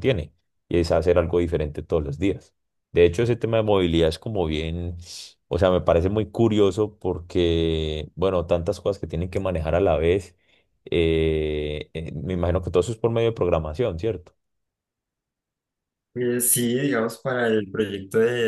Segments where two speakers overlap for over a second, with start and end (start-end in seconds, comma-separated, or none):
none